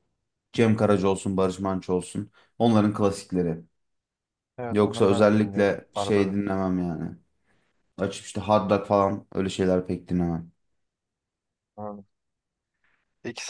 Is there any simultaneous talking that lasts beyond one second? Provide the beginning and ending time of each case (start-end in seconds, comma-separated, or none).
4.7-6.5